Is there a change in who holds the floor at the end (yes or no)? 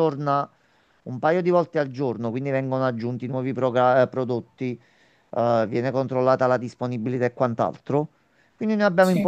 no